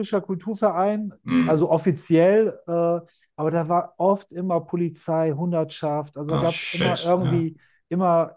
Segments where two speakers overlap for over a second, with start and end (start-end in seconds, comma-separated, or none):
6.3-7.5